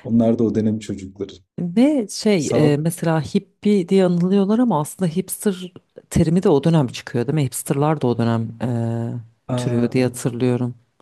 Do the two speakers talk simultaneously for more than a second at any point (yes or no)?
no